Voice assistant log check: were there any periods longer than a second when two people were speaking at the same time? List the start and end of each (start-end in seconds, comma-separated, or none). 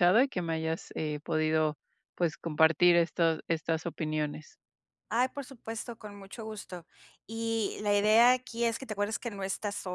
none